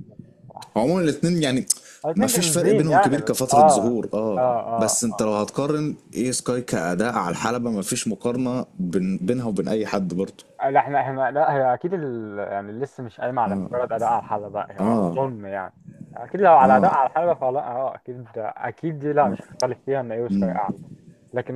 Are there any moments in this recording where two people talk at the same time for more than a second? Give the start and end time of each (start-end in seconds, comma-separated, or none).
2.1-5.0